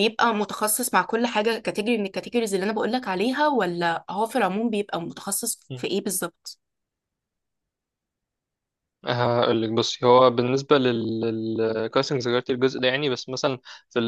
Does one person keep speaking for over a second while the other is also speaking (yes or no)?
no